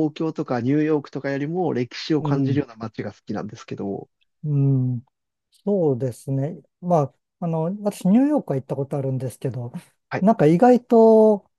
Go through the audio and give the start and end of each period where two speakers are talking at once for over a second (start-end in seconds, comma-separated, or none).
none